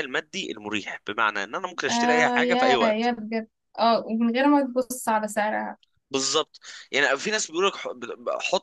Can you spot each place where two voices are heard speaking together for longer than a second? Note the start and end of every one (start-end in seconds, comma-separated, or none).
1.9-3.1